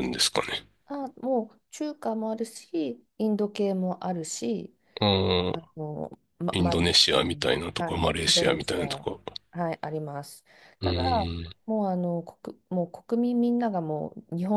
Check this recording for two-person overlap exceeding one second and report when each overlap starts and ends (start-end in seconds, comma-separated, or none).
6.5-9.1